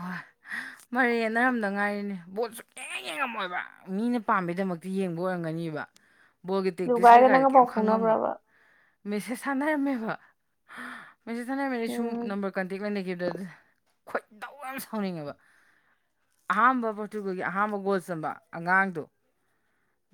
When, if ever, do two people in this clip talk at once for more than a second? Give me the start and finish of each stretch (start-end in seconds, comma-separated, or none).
6.9-8.2